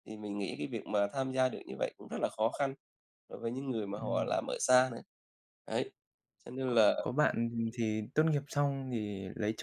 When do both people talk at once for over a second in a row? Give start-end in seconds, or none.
none